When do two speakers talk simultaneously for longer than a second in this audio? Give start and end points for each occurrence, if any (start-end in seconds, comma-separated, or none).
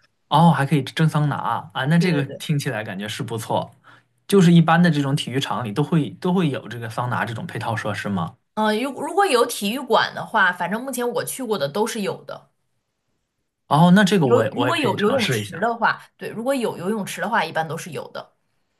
14.2-15.8